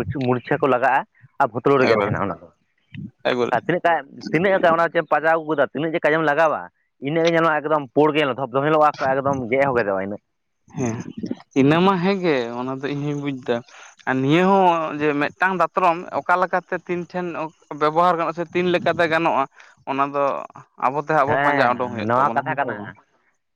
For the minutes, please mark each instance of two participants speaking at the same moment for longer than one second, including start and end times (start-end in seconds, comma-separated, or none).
21.3-22.8